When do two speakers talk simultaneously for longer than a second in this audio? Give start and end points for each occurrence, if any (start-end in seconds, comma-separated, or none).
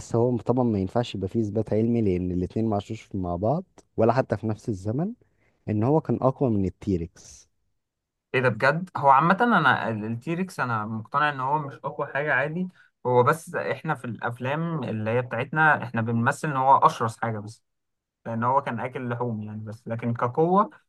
none